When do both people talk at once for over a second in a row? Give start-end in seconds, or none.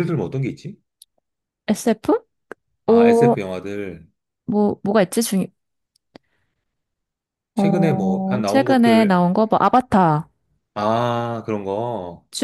7.5-9.2